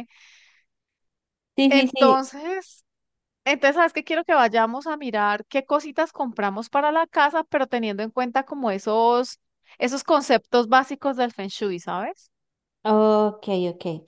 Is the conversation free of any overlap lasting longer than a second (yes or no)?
yes